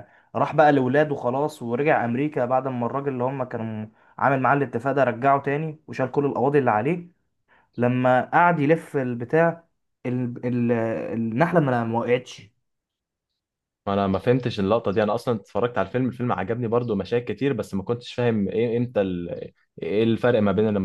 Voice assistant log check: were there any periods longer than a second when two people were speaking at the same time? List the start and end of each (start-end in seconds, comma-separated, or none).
none